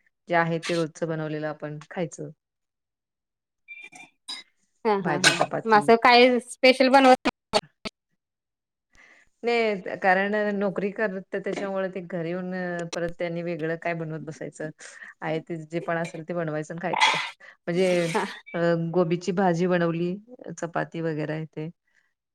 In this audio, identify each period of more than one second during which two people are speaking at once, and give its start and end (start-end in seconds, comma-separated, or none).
none